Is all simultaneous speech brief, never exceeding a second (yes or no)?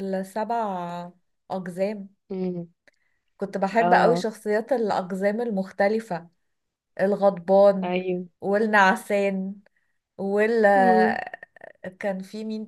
yes